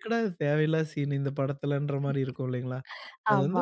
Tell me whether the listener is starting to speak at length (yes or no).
no